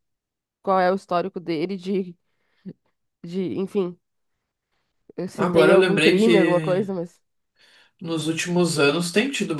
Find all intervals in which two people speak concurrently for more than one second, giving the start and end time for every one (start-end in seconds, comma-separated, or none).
5.4-6.9